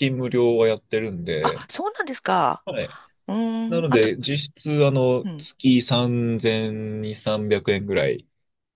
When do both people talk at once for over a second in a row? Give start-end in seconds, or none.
none